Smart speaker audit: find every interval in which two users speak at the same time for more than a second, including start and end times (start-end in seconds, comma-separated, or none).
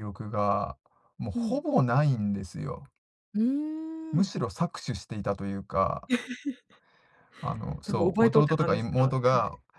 7.8-9.1